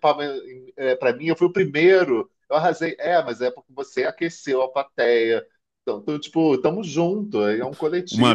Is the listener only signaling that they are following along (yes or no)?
no